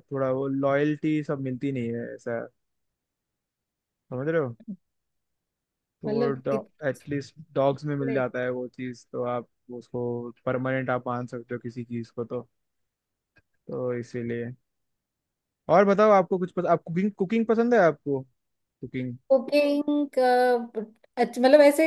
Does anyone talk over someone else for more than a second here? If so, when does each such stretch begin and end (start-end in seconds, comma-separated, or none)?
none